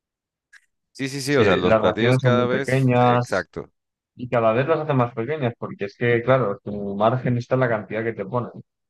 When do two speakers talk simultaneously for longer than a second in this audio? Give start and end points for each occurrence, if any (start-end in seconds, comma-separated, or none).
1.3-3.5